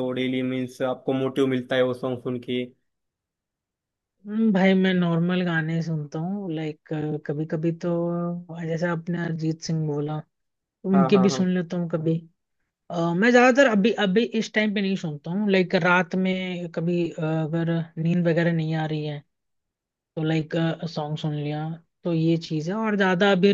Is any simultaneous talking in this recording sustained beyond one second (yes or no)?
no